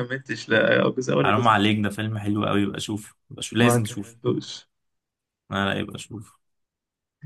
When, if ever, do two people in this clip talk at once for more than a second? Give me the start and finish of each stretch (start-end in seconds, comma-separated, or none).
none